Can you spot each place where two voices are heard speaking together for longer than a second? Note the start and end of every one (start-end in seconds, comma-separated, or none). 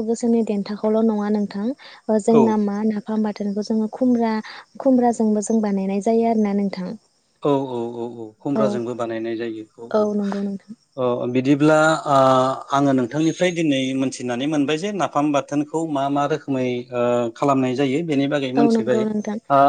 none